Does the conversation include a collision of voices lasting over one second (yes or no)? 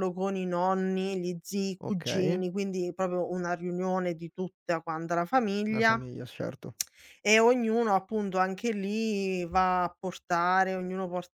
no